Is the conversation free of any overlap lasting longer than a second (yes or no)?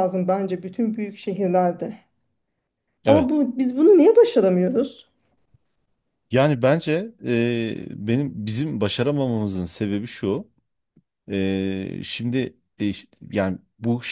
yes